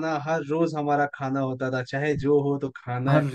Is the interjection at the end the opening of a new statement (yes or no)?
no